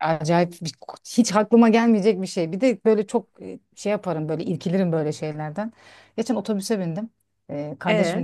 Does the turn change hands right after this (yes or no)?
no